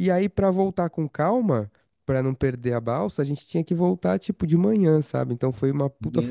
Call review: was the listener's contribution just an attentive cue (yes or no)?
yes